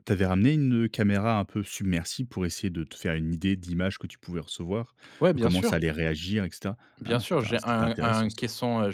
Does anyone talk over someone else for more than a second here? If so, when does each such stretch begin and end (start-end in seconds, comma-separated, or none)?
7.0-8.4